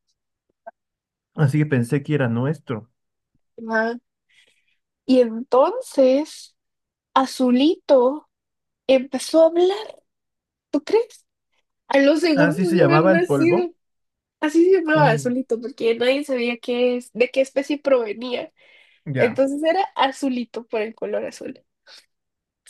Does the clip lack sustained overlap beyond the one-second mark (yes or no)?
no